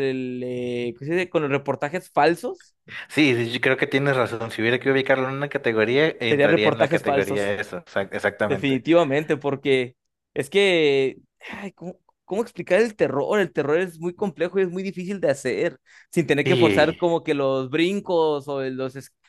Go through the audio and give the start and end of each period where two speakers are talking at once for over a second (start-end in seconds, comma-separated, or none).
6.3-7.5